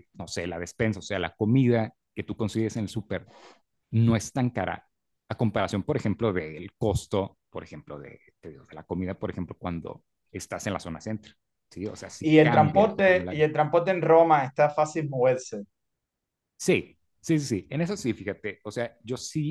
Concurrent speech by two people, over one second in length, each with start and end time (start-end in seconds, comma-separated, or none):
12.2-13.4